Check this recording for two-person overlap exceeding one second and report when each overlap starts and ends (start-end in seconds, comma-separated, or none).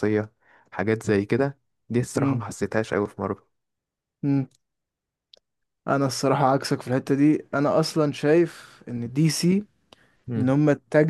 none